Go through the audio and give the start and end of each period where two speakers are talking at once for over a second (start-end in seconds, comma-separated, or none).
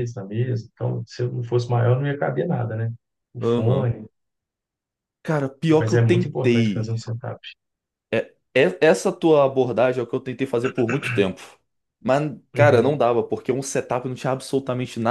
5.7-6.9